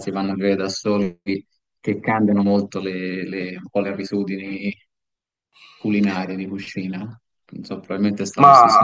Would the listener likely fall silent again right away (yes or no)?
no